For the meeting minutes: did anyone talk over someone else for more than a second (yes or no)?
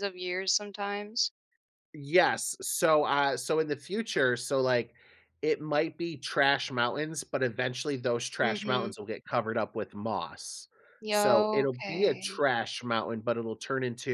yes